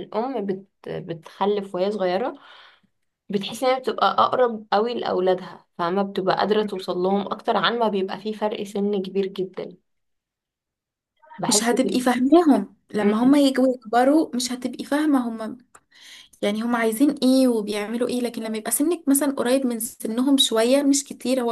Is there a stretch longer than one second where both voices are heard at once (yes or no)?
no